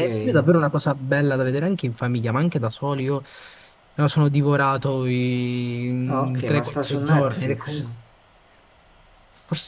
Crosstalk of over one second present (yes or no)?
yes